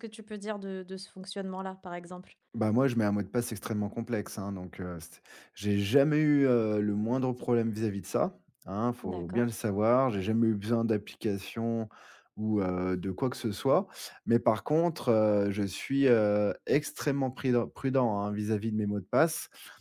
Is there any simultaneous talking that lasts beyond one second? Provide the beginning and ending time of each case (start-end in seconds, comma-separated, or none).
none